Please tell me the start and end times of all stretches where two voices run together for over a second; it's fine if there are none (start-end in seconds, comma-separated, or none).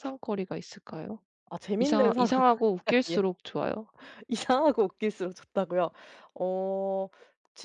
1.8-3.2